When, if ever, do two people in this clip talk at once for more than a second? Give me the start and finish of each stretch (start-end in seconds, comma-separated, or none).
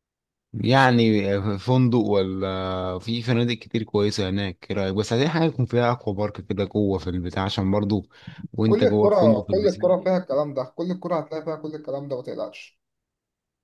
8.7-10.1